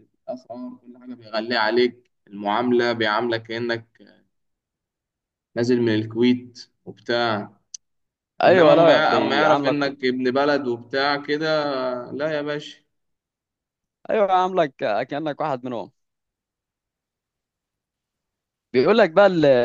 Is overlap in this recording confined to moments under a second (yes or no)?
no